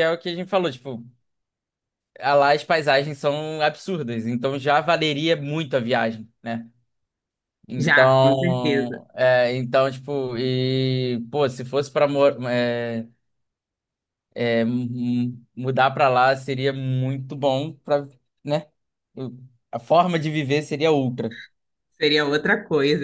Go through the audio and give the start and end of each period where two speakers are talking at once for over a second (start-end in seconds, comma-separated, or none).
7.8-9.0